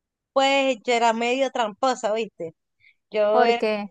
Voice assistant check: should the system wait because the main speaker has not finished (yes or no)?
yes